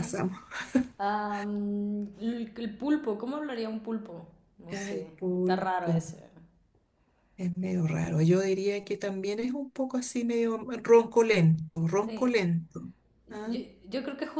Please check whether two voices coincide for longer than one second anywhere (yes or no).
yes